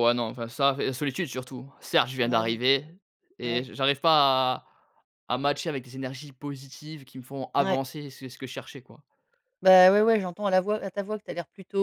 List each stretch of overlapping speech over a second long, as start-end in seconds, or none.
none